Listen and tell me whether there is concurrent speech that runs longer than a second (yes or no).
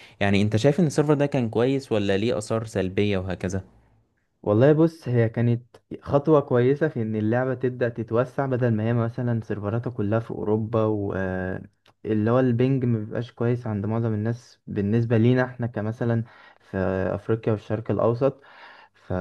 no